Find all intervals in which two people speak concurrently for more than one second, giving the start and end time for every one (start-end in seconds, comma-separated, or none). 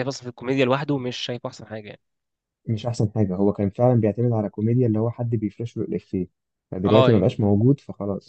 none